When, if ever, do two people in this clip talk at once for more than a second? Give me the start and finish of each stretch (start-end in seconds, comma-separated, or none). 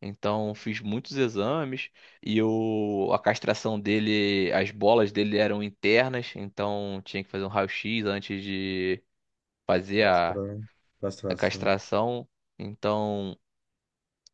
none